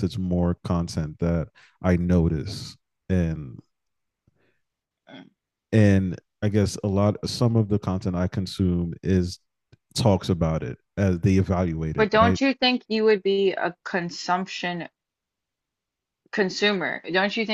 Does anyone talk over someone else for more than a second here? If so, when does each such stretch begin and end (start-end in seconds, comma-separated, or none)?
none